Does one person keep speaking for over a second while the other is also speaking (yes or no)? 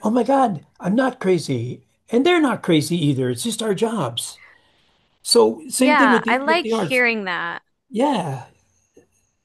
yes